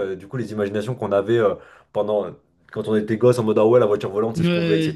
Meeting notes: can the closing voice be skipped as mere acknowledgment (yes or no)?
yes